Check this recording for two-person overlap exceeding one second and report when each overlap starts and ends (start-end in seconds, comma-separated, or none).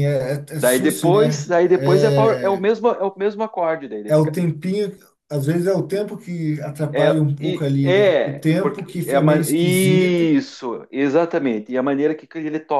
0.6-2.6, 6.9-10.3